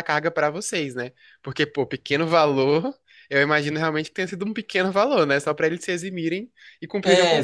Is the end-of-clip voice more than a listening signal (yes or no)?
yes